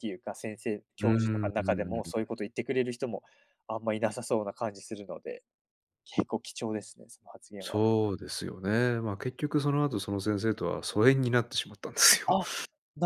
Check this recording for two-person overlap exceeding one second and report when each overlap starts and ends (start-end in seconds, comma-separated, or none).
1.0-2.3